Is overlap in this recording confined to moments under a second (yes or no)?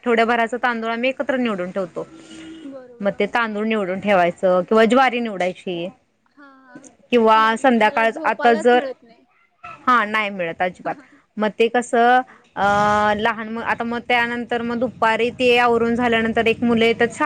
no